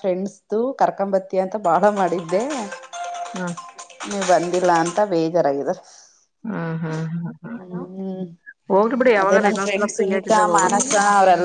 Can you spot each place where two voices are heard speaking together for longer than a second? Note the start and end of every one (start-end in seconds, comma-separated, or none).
9.2-10.9